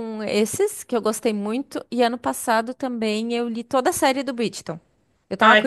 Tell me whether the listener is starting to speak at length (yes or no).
no